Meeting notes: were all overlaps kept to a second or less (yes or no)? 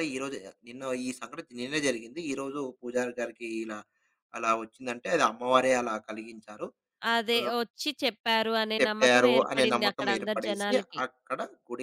no